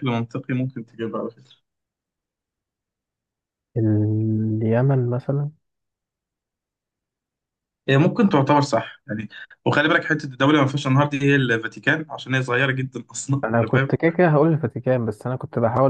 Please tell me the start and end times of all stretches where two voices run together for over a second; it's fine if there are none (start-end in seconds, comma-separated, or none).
none